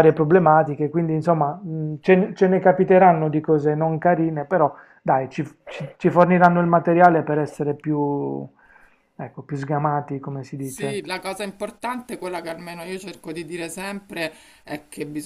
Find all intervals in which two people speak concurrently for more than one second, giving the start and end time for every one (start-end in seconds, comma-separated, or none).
none